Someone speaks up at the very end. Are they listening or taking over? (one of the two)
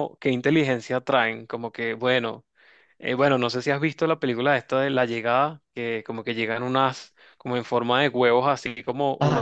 listening